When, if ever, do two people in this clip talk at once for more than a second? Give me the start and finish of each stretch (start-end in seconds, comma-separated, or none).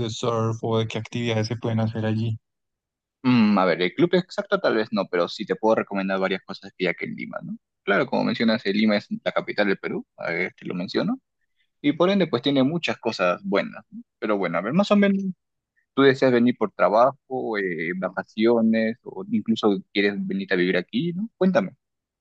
none